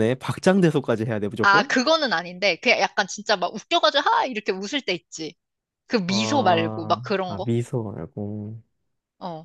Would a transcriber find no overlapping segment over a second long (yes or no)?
no